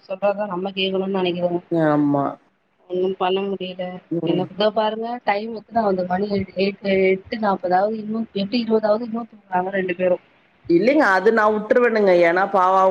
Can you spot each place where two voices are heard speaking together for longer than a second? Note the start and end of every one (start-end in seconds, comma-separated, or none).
none